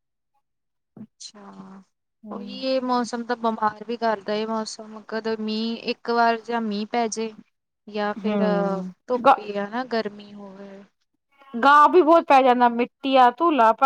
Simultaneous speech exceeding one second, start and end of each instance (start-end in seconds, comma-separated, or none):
none